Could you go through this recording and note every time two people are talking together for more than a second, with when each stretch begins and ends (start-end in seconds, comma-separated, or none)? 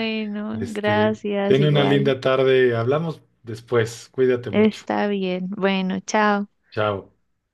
0.5-2.1